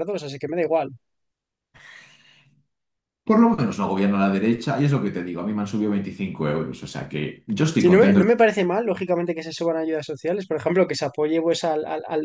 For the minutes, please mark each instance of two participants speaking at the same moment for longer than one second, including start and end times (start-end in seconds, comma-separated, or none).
none